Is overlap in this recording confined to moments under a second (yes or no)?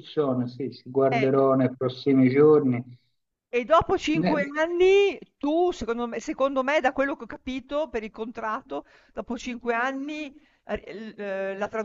yes